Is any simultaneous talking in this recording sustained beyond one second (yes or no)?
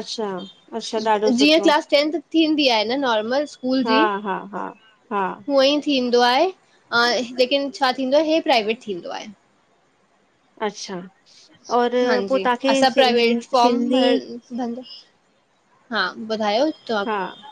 yes